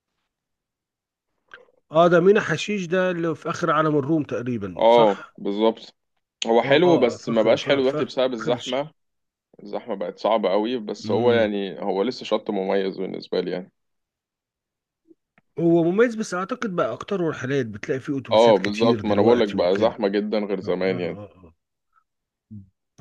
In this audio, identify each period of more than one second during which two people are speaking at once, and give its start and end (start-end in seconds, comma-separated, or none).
6.6-8.0, 18.3-19.9